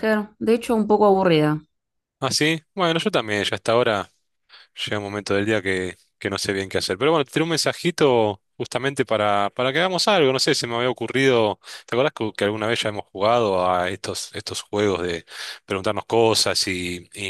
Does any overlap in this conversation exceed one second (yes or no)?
no